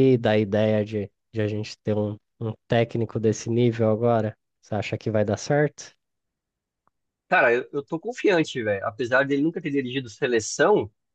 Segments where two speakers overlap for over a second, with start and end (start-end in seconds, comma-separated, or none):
none